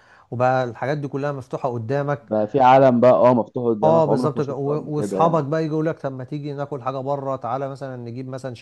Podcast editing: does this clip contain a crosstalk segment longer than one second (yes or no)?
yes